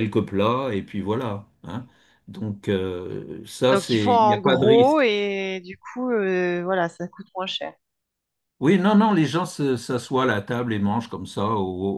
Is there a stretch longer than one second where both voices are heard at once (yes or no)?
yes